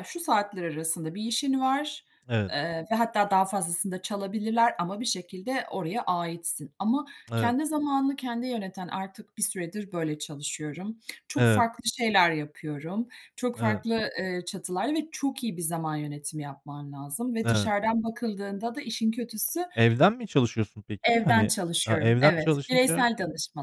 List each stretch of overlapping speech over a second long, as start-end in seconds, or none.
21.1-23.1